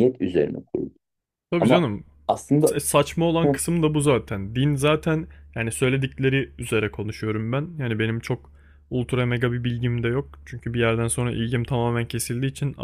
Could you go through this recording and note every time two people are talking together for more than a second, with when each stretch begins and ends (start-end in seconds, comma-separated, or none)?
none